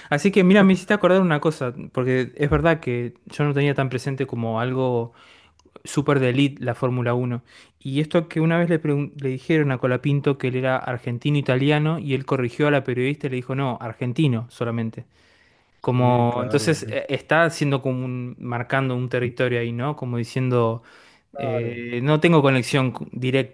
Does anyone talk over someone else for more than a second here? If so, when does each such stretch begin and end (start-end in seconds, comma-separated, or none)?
15.8-17.1